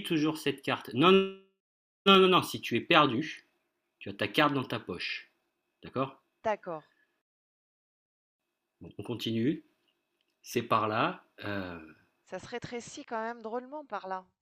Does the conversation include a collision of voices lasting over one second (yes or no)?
no